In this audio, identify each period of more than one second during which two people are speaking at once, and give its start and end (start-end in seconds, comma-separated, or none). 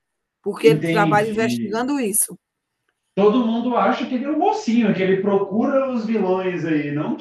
0.6-1.9